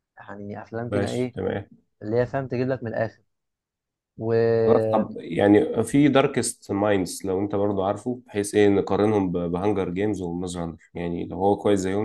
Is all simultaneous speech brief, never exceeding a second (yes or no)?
yes